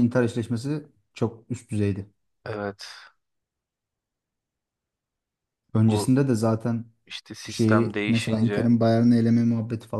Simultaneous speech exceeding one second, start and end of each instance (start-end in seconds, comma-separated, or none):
7.5-8.7